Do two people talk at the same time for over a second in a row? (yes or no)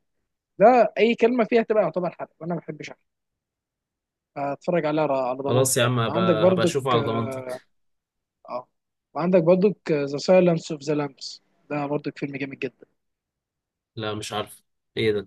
yes